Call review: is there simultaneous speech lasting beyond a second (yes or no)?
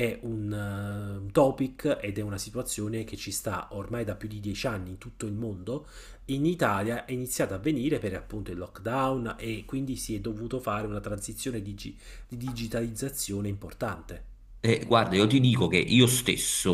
no